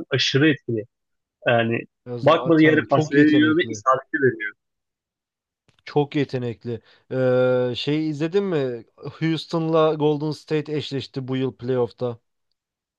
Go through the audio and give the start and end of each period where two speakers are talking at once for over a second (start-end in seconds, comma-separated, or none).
2.2-3.8